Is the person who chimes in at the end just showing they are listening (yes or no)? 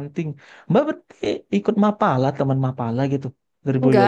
no